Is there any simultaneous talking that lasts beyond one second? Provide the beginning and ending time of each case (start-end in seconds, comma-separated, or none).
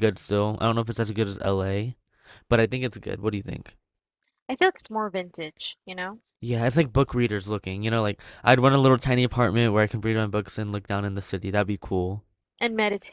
none